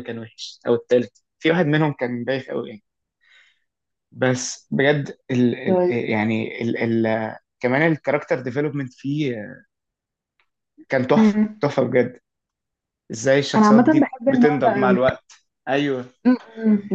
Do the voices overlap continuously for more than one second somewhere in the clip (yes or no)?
yes